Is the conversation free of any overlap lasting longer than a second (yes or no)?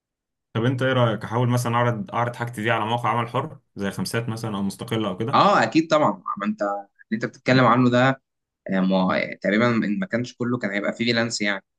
yes